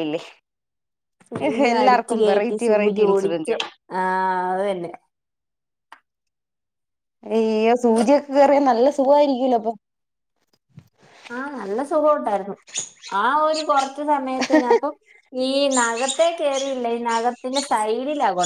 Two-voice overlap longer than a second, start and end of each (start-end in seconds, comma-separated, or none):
1.7-3.5